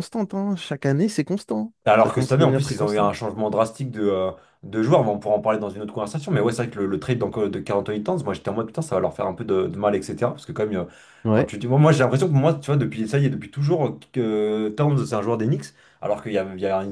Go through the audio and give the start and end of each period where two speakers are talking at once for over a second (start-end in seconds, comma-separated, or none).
1.9-3.1